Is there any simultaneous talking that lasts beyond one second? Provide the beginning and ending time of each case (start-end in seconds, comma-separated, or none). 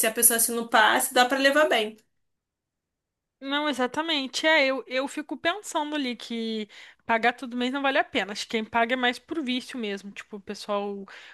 none